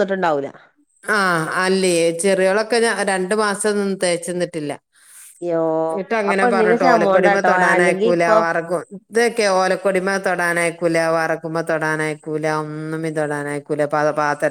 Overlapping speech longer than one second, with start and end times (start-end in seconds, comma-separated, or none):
6.3-8.4